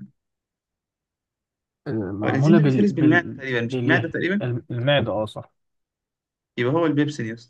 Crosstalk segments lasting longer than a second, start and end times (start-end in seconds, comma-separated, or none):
2.2-4.5